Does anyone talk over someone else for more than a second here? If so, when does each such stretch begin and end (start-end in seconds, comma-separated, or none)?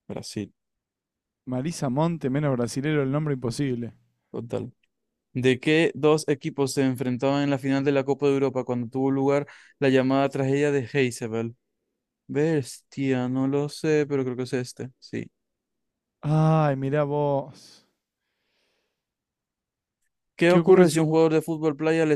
none